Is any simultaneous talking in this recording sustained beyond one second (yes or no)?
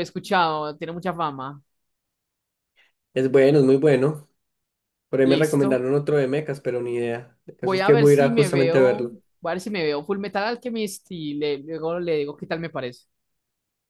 yes